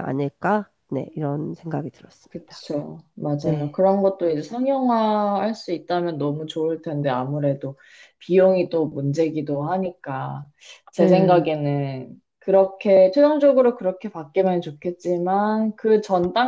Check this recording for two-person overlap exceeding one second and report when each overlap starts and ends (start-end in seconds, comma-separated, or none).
none